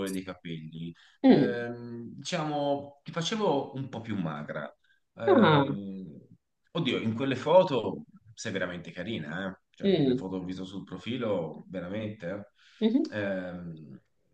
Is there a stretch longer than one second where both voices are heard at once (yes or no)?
no